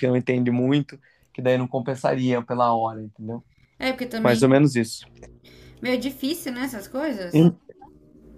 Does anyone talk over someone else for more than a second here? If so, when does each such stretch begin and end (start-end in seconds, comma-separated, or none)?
none